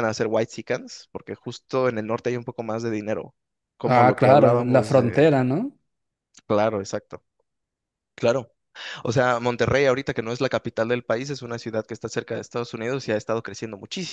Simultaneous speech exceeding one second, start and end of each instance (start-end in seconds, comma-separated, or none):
3.8-5.4